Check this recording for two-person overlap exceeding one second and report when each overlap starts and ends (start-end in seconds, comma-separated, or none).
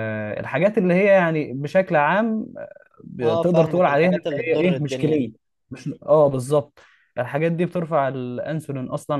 3.2-5.3